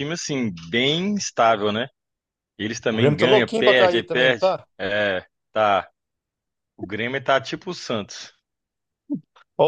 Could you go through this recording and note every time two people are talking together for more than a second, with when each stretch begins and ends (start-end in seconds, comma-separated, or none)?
2.9-4.7